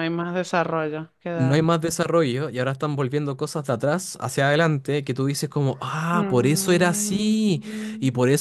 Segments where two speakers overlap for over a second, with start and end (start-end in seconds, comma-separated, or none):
6.1-7.3